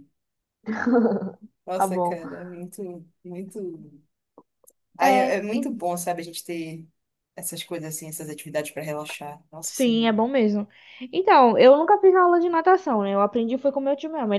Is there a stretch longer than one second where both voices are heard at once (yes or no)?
no